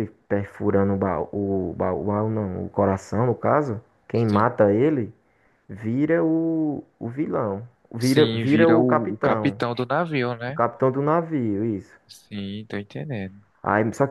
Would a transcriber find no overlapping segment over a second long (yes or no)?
no